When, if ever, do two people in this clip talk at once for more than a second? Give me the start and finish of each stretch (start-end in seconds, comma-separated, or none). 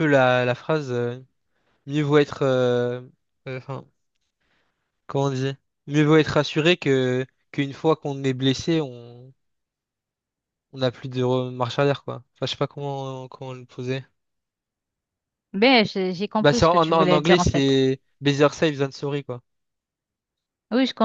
16.4-17.8